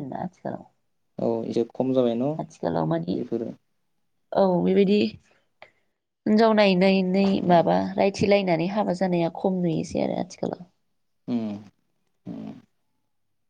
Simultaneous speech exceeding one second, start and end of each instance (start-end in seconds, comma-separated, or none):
none